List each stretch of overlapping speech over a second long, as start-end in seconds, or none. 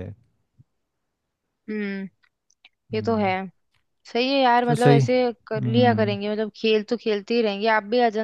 4.7-6.2